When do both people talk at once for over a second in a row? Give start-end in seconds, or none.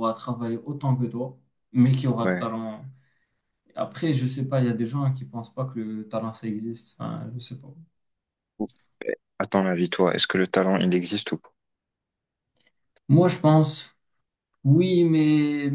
none